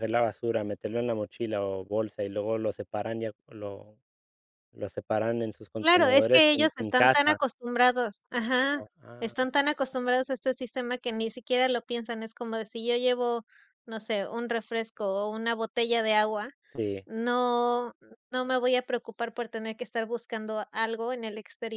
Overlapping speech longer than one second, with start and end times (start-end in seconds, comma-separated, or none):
5.8-7.4